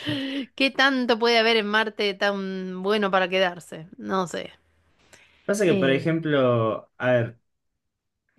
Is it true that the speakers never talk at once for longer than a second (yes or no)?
yes